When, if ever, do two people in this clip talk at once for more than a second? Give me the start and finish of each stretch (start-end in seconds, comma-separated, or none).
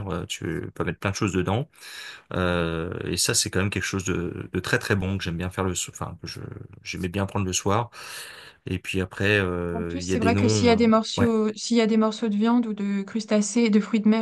9.7-11.3